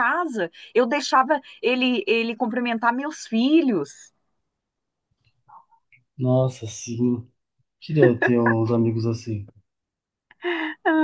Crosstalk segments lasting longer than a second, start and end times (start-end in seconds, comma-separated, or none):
none